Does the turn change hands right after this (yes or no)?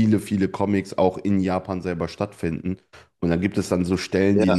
no